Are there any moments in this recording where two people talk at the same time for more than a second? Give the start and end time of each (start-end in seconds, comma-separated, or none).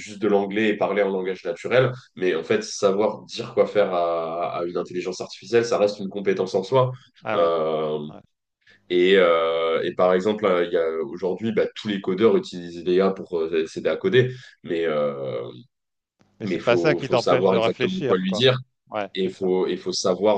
16.4-18.5